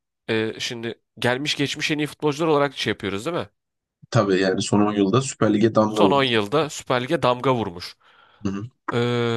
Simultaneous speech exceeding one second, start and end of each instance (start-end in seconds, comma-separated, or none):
none